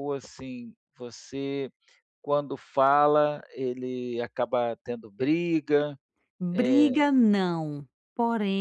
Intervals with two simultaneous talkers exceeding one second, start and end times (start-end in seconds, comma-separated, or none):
none